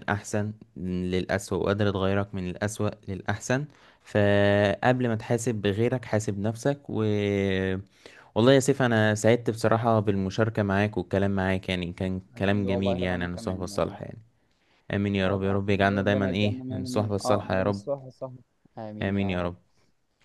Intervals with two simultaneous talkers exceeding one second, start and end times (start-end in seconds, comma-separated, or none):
12.4-14.0, 15.2-17.9